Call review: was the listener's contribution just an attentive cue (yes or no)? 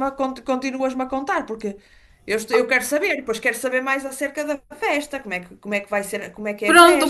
no